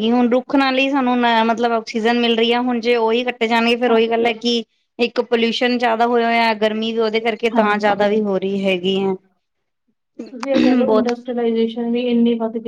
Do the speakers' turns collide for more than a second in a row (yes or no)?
no